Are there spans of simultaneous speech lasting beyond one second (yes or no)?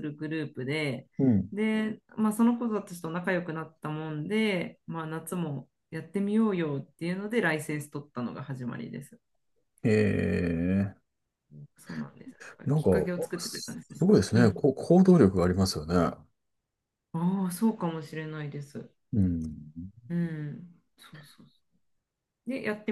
yes